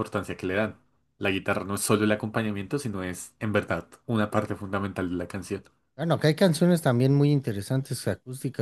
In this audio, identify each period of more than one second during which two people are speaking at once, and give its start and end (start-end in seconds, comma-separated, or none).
none